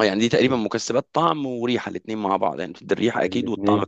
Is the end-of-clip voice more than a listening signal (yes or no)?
no